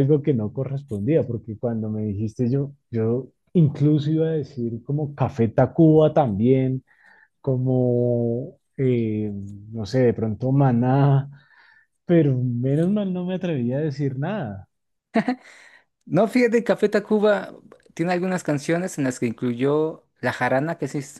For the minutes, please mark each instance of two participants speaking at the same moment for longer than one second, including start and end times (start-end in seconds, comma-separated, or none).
none